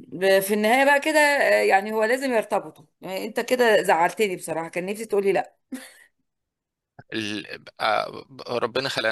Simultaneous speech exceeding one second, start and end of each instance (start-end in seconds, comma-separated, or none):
none